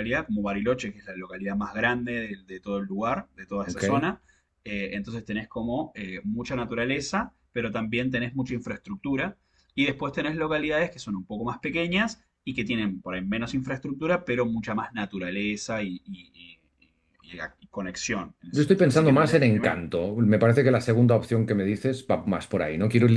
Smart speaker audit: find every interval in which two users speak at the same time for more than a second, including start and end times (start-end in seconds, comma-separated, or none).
18.5-19.8